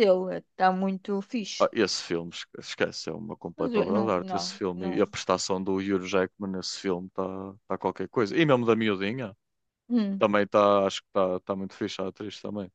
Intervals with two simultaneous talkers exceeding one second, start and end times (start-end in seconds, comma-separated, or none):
3.6-5.1